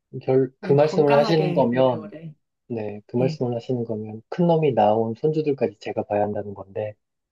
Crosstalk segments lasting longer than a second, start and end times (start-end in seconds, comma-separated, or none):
0.6-2.1